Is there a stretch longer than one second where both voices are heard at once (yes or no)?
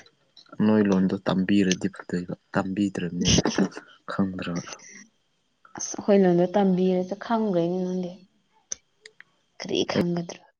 no